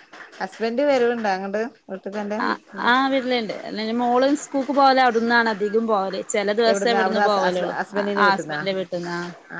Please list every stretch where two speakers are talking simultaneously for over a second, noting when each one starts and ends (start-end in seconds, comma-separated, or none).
6.7-8.6